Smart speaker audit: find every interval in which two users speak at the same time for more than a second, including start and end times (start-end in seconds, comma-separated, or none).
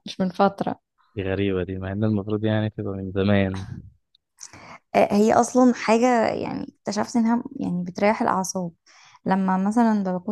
none